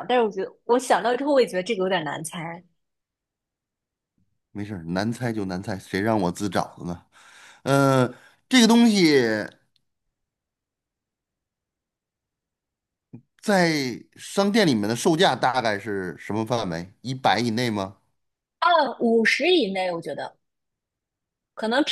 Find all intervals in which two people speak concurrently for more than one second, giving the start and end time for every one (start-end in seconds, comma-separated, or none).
none